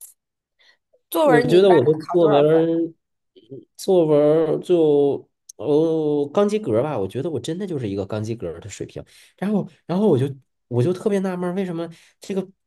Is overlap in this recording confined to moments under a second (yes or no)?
no